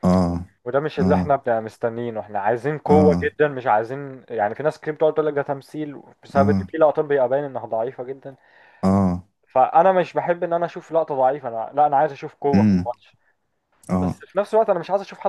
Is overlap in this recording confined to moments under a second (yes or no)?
yes